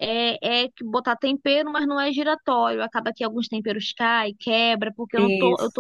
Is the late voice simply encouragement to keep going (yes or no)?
yes